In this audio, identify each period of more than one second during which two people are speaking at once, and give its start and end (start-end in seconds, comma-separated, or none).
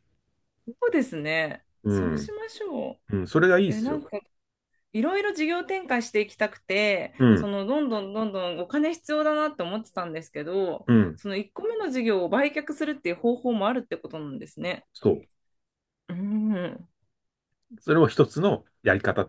none